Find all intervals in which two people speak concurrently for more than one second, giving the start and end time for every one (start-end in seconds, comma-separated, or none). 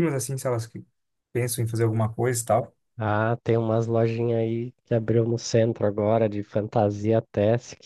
none